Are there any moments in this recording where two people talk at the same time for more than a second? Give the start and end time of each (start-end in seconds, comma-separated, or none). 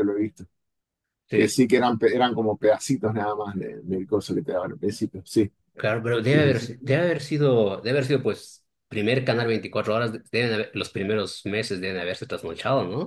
none